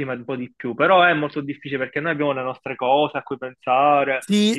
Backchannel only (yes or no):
no